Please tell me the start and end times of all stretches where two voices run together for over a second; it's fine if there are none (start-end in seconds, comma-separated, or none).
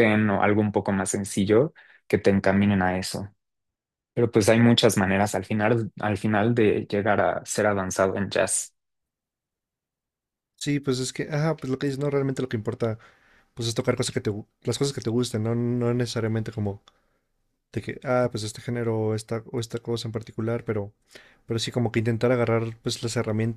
none